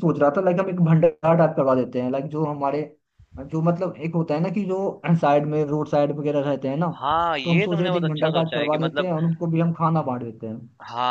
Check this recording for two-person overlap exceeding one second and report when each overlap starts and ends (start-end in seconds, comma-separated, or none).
7.4-9.1